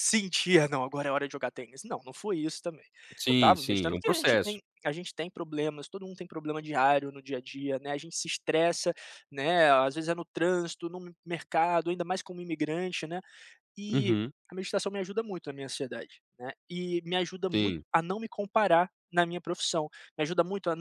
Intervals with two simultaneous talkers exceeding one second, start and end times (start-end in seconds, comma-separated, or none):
3.3-4.6